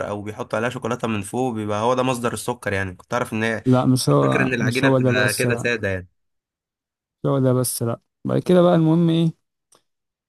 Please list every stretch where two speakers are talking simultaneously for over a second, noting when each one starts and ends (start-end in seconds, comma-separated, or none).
4.1-5.8